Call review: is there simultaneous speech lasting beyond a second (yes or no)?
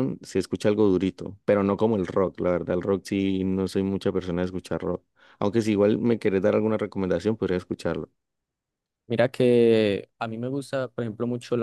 no